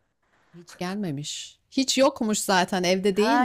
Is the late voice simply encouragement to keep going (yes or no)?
no